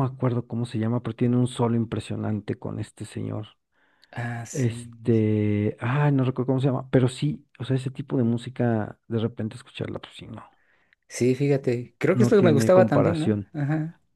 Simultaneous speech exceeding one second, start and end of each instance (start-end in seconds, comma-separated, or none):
12.1-13.5